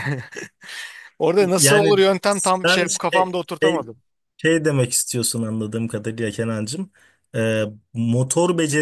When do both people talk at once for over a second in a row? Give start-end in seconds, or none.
1.4-3.9